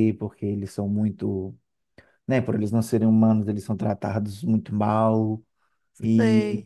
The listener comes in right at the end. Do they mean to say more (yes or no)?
no